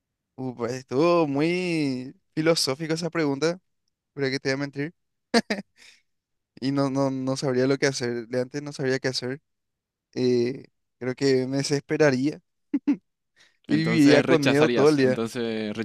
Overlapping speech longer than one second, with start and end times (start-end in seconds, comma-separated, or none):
13.7-15.2